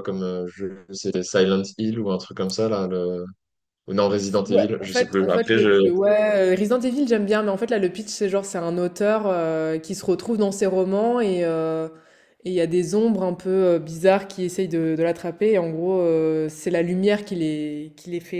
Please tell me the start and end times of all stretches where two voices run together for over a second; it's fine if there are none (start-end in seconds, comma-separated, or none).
4.0-5.9